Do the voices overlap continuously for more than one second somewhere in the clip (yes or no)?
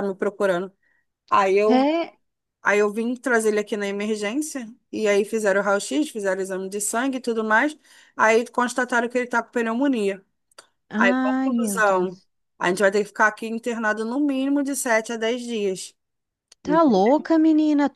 yes